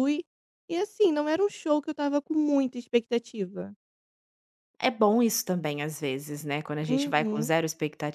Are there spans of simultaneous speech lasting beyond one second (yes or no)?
no